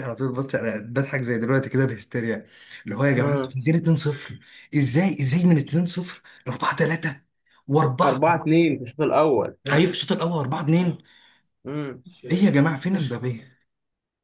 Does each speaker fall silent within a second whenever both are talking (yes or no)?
yes